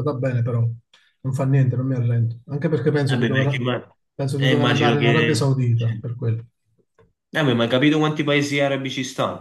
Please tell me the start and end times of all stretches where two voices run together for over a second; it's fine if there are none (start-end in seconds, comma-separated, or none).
4.4-5.9